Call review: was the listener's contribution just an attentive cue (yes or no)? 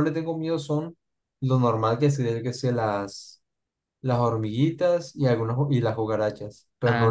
no